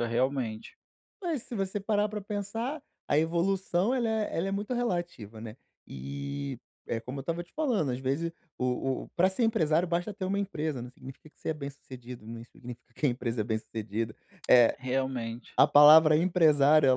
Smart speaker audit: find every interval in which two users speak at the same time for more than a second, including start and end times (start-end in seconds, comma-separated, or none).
none